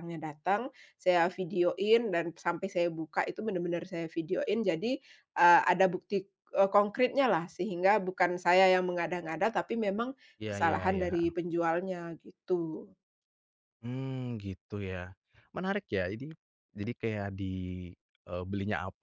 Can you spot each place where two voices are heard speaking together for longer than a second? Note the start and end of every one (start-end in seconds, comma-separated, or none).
none